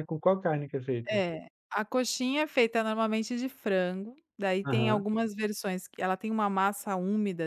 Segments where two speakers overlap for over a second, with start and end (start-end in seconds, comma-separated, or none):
none